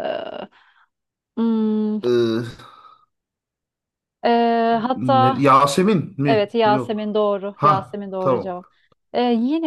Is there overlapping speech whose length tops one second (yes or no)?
yes